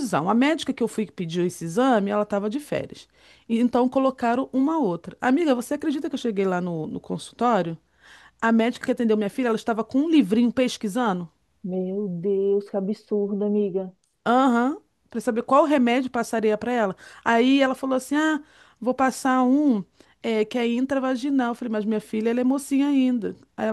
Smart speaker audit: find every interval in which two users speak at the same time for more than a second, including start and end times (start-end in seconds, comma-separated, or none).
none